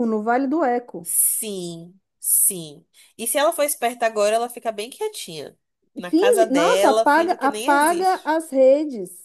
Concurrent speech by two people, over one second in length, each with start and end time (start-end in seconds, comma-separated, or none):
6.0-8.3